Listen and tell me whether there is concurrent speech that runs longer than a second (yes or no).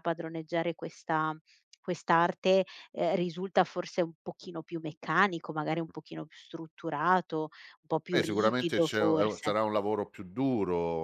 yes